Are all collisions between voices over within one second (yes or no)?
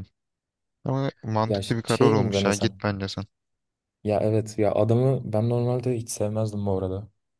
no